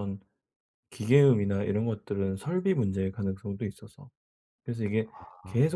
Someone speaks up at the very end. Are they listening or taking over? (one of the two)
listening